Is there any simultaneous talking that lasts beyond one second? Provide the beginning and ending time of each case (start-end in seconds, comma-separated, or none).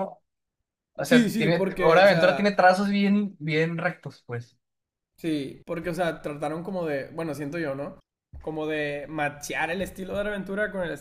1.1-2.7